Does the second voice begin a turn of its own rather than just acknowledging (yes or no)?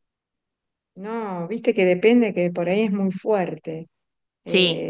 no